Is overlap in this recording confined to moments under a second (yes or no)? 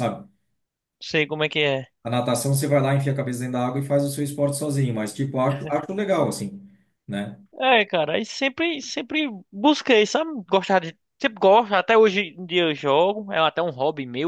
yes